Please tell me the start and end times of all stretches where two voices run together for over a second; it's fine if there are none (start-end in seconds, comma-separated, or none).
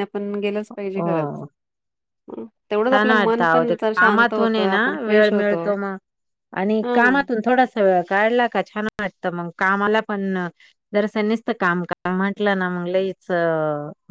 2.9-5.6